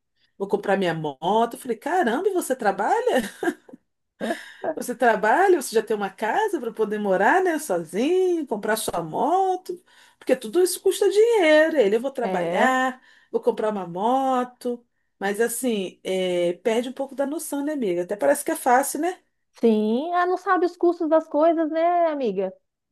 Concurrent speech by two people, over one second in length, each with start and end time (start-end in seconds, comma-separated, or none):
none